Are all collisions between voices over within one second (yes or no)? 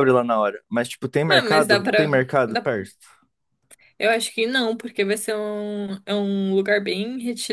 no